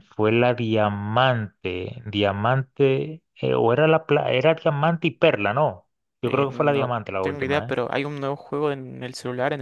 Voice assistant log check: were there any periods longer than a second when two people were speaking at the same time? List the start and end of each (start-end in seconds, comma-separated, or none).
6.2-7.7